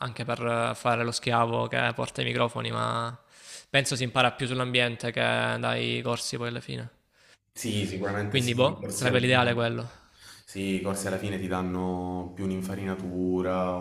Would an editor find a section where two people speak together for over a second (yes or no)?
yes